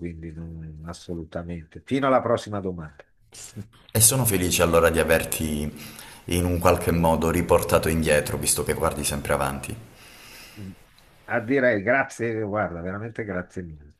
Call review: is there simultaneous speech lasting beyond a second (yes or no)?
no